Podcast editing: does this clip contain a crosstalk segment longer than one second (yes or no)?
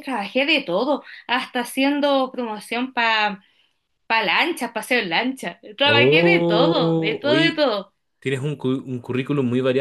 yes